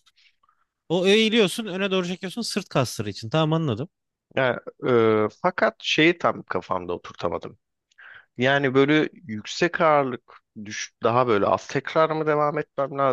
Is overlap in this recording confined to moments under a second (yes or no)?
yes